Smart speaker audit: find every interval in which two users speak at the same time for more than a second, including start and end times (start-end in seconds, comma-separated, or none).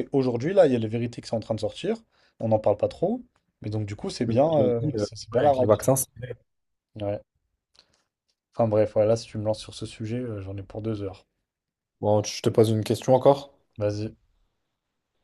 4.3-5.9